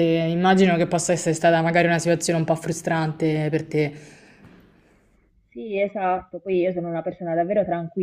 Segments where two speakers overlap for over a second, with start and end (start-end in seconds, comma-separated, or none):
none